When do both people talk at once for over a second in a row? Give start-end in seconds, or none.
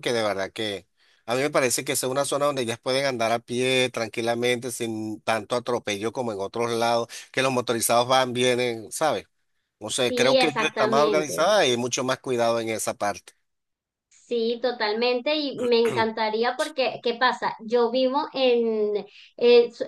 10.1-11.5